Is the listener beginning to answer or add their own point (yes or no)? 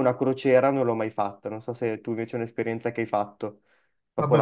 yes